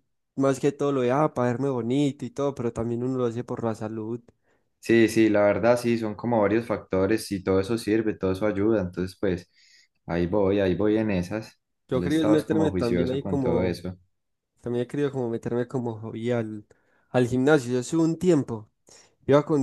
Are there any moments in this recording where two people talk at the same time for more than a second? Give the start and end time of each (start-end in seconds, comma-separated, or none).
11.9-13.8